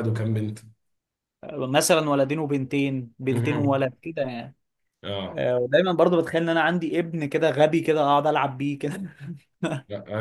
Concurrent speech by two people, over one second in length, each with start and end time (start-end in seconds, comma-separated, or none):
none